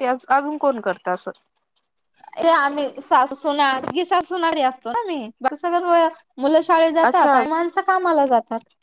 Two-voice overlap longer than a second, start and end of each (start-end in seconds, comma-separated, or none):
none